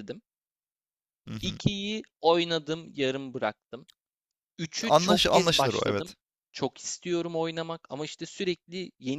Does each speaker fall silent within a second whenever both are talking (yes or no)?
no